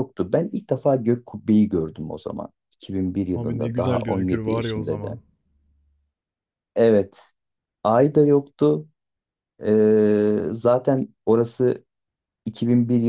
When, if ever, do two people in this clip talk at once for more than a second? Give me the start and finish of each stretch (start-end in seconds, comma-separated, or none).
3.4-5.2